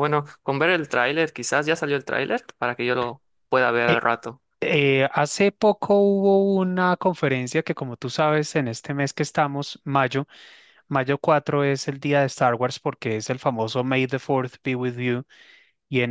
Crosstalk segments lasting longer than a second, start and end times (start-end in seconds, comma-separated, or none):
none